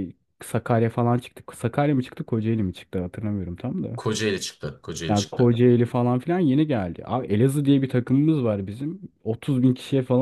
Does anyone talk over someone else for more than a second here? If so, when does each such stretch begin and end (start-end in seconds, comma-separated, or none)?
none